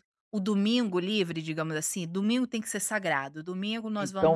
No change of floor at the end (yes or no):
no